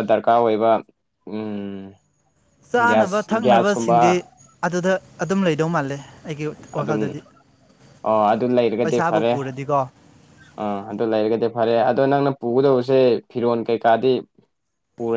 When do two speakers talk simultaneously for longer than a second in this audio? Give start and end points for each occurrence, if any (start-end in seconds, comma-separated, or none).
2.9-4.2